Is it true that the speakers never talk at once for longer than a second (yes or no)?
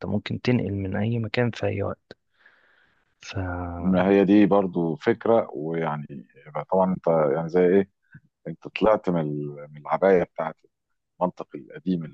yes